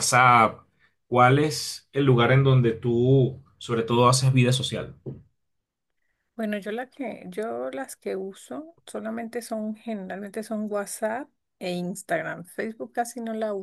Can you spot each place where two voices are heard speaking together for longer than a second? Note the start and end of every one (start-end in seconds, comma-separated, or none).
none